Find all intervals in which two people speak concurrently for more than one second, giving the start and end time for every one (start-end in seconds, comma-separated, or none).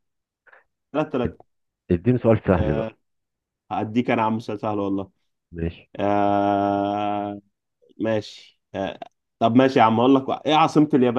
none